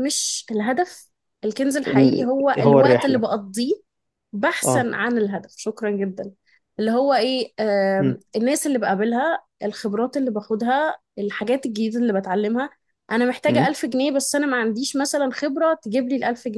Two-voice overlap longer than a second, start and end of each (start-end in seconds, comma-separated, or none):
1.9-3.3